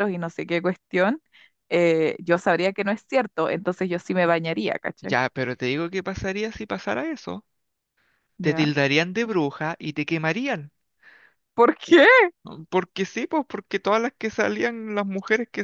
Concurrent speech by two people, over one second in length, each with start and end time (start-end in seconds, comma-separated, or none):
none